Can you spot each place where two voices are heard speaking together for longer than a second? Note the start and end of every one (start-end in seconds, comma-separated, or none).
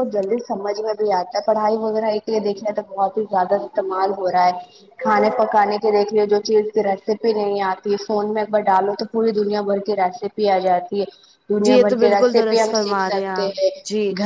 11.7-13.5